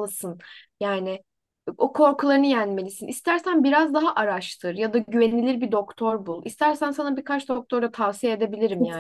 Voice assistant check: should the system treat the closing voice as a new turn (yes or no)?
yes